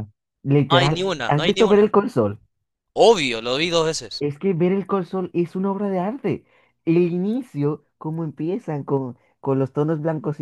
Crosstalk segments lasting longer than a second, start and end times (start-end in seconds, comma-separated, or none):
0.7-1.9